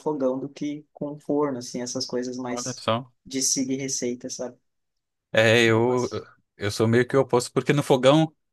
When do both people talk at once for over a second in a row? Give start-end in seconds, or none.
none